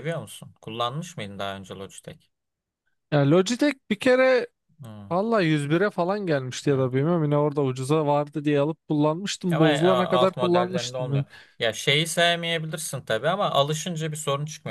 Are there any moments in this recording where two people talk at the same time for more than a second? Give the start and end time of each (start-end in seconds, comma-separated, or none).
9.5-11.2